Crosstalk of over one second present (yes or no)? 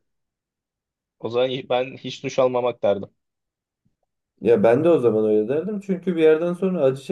no